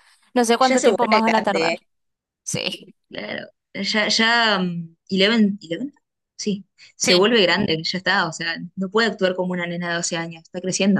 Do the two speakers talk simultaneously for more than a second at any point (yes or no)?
yes